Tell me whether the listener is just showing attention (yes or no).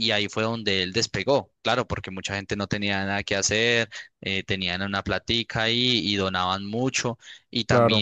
yes